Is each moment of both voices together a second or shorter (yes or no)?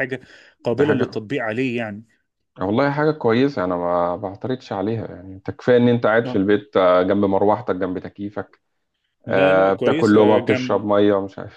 no